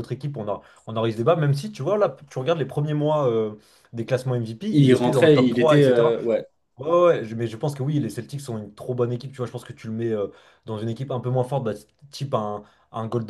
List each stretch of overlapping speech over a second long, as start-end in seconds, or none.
4.7-6.1